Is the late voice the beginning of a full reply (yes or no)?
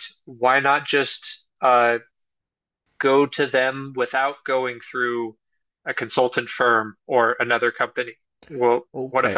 yes